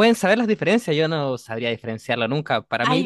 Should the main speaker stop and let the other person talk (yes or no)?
no